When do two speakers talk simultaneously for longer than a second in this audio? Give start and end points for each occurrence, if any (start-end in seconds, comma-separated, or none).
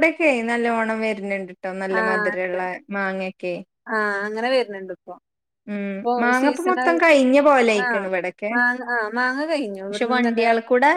6.4-7.9